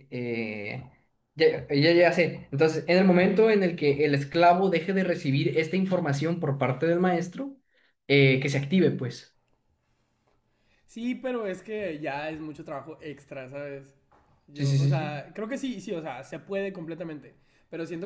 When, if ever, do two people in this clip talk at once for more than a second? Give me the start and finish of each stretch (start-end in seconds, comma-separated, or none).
none